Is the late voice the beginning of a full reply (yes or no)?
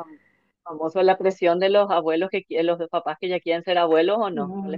yes